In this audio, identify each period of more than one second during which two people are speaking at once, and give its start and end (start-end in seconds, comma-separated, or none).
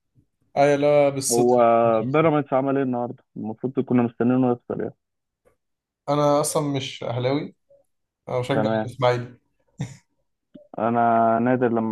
none